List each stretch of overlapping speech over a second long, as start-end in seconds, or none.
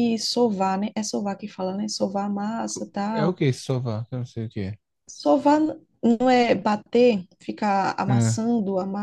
none